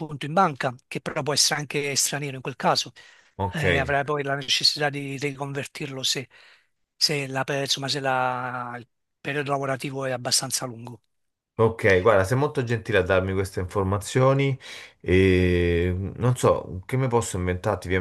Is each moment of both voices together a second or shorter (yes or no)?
yes